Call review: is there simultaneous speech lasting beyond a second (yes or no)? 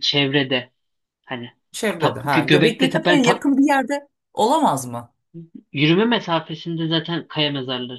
yes